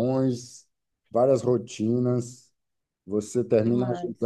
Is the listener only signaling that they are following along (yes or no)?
yes